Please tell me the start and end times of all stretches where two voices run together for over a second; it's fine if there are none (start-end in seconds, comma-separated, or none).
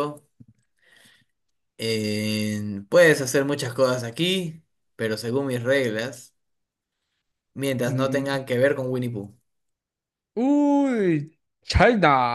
none